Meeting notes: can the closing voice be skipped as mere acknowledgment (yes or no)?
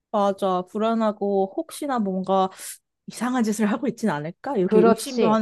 no